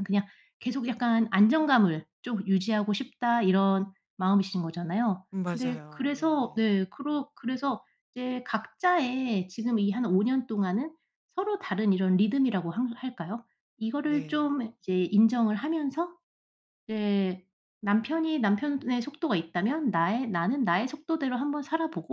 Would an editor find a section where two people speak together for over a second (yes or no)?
yes